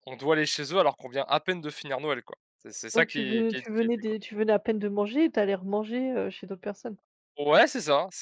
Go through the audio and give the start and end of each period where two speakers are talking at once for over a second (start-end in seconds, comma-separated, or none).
2.9-4.2